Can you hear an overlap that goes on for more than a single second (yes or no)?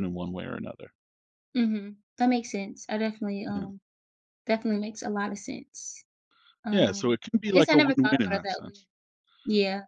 yes